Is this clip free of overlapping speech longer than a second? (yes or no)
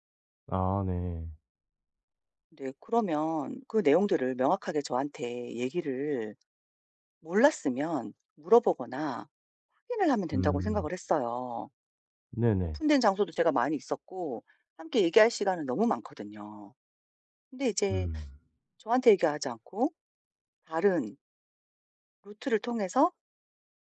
yes